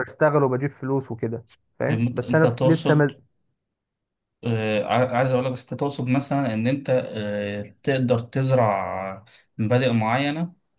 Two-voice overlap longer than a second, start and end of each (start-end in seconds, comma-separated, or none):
1.9-3.1